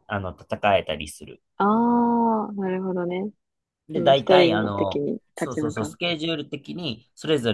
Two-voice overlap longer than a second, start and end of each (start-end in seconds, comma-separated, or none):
3.9-6.0